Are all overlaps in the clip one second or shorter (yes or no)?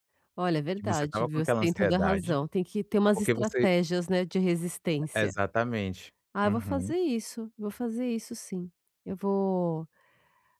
no